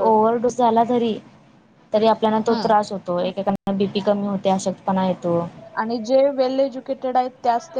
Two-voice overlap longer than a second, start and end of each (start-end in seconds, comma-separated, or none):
none